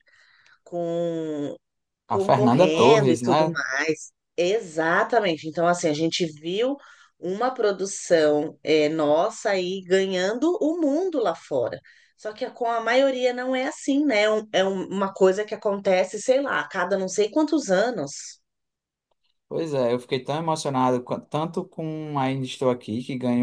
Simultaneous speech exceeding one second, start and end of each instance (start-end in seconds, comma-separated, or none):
2.1-3.6